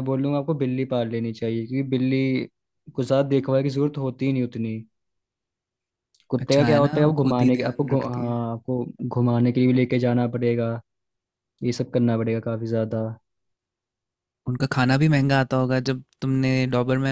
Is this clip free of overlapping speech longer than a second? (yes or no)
no